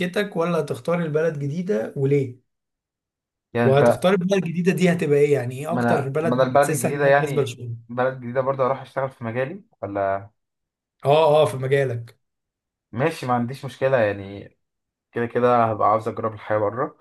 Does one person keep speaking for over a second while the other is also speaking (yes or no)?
yes